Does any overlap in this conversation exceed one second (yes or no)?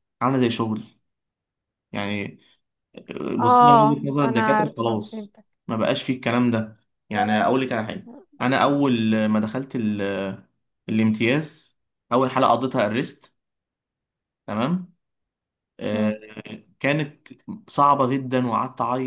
yes